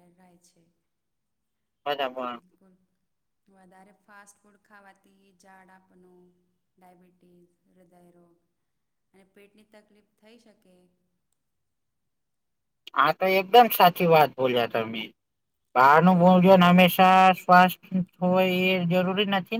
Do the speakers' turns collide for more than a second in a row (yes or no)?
yes